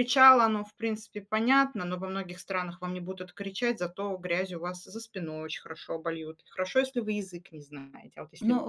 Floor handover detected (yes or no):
yes